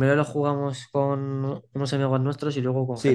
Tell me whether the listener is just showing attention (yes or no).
no